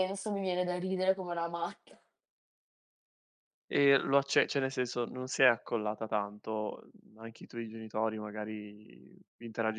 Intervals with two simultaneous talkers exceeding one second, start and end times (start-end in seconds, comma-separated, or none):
none